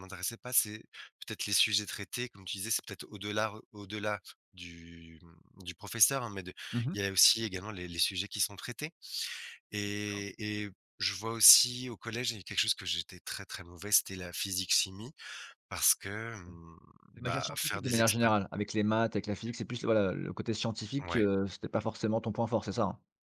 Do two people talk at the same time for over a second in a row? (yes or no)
yes